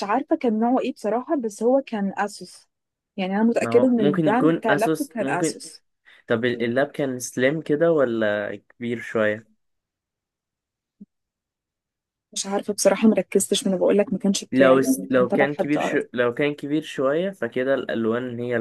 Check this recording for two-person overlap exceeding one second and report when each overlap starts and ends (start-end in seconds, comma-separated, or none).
3.6-5.6, 14.5-16.0